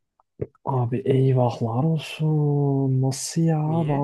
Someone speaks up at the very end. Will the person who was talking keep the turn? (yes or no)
yes